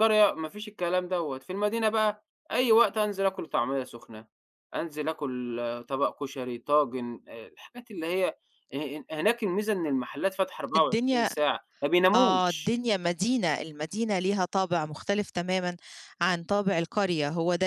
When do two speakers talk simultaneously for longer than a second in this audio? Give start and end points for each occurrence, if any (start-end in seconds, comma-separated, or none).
none